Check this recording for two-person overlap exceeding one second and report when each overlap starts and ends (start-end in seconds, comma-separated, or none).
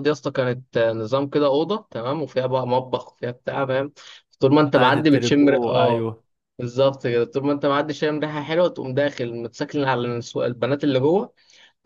4.7-6.1